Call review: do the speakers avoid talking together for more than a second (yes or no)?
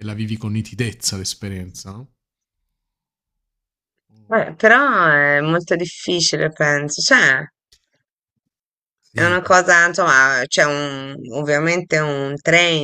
yes